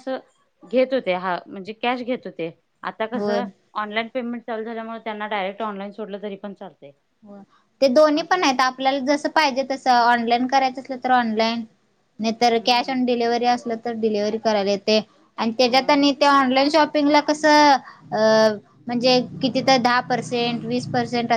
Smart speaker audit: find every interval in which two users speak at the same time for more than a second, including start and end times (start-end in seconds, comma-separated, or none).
none